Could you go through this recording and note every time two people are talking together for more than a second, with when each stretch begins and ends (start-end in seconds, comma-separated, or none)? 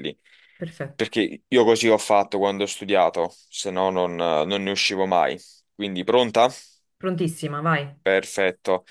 none